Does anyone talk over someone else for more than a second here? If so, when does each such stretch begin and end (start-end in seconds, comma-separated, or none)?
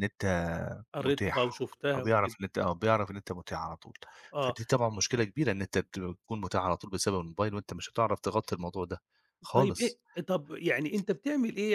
1.0-2.3